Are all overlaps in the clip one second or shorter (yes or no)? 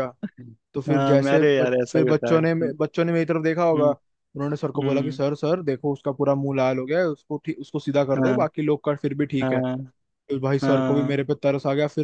no